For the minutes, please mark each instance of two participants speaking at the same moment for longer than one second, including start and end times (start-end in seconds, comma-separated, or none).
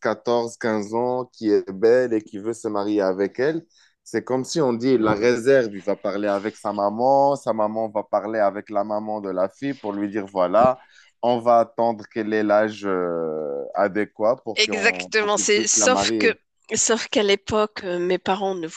14.6-16.3